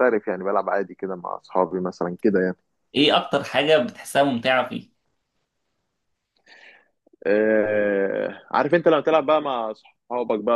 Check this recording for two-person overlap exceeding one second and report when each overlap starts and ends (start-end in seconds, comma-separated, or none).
none